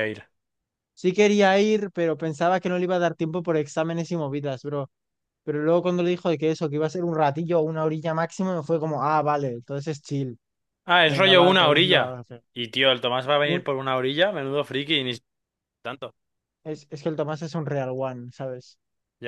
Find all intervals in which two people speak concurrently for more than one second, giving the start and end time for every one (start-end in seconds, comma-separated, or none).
11.0-12.4